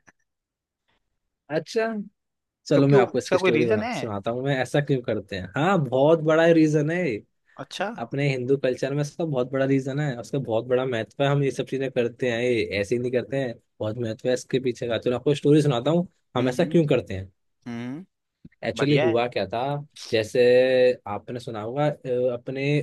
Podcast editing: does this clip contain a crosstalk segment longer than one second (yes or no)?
yes